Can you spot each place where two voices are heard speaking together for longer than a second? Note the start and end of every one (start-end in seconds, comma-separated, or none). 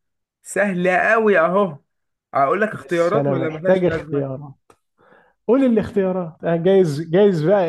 2.7-4.3